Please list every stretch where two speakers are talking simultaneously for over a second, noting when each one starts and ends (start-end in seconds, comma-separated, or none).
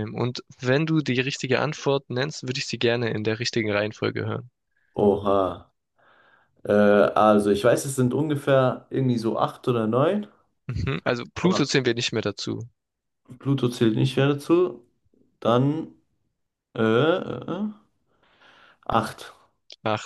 none